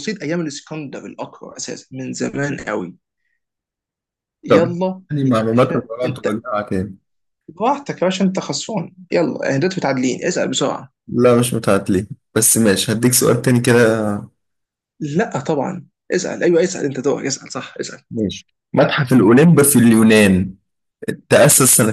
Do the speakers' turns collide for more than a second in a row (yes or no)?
yes